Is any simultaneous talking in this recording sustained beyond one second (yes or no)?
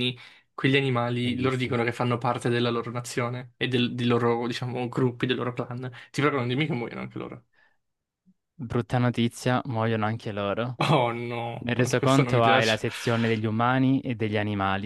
yes